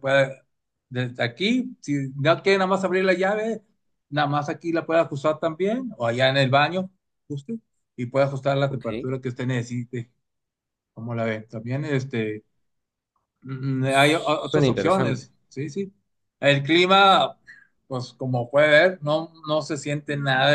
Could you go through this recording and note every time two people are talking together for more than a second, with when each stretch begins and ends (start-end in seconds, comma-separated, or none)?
13.8-15.3